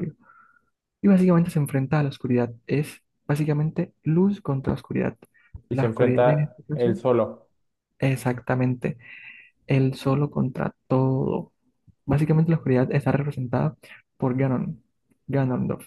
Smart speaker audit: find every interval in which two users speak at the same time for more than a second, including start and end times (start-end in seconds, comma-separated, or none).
5.7-7.0